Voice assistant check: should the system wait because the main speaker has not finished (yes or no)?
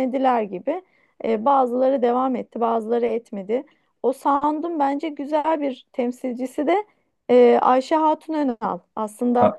yes